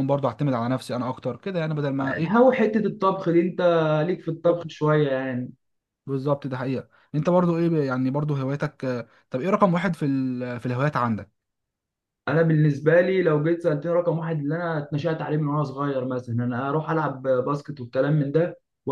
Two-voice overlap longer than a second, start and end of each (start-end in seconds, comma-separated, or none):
none